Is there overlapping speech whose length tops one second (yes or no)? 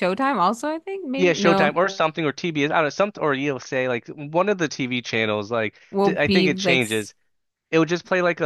yes